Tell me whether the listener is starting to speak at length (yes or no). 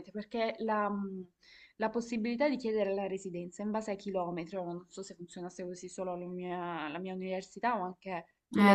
yes